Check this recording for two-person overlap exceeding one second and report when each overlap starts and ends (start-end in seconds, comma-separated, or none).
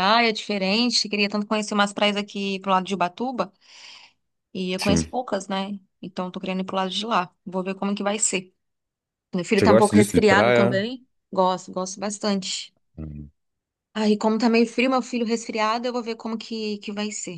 9.6-10.8